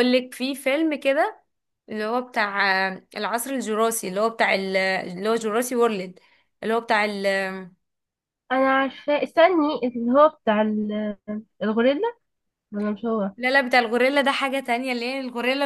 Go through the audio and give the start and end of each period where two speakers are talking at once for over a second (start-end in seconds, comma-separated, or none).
none